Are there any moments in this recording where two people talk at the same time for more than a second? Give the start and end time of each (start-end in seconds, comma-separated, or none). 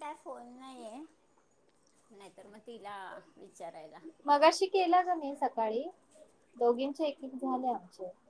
none